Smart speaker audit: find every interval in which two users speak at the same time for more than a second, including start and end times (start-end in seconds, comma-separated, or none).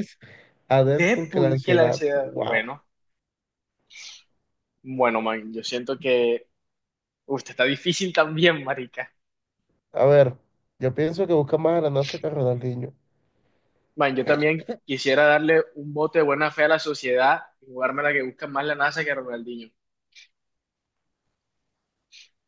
0.9-2.7